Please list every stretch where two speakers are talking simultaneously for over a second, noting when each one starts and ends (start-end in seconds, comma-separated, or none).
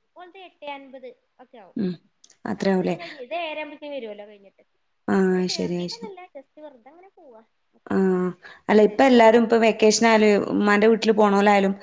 none